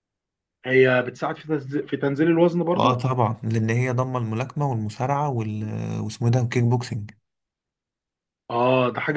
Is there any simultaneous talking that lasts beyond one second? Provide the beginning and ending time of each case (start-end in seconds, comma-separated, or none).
none